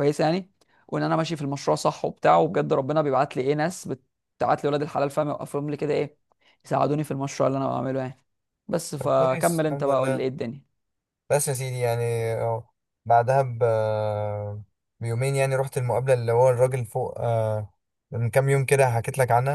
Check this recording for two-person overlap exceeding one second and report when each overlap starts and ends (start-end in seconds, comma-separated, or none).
9.0-10.3